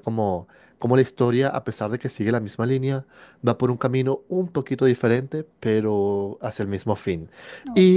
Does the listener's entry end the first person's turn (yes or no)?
no